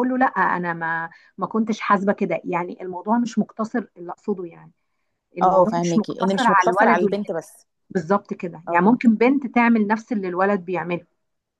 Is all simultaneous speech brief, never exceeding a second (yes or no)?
no